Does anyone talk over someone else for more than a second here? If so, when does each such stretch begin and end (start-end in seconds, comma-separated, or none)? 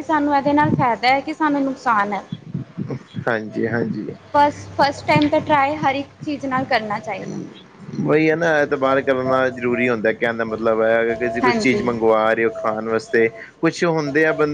none